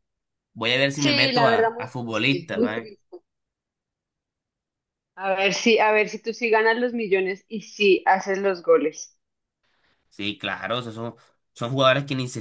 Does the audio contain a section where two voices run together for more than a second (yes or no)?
yes